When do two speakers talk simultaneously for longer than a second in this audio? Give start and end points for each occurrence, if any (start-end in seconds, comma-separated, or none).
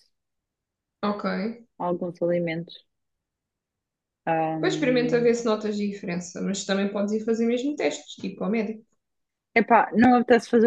none